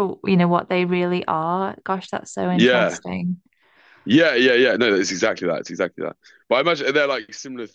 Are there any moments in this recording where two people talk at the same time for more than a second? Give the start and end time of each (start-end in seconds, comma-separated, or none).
none